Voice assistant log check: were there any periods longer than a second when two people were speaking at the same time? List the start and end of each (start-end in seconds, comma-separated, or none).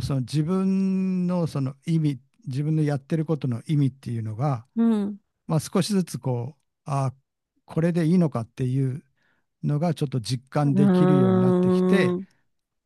10.6-12.2